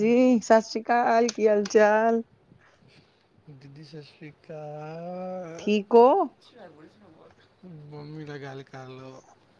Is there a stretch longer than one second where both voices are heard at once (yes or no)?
no